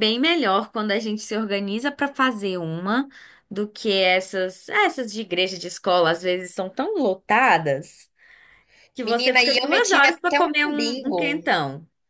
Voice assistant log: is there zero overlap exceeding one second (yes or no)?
no